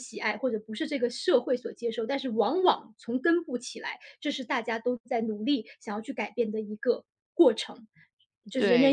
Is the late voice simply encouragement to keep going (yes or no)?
no